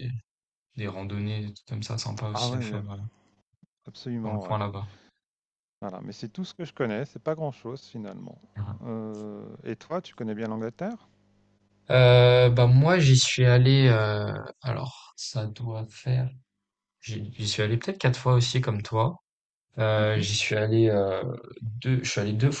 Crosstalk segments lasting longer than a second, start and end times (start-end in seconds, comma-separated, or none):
none